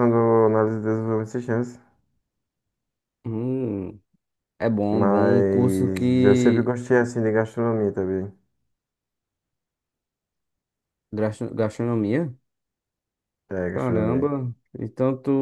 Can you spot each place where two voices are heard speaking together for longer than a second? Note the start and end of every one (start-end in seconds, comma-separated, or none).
4.9-6.7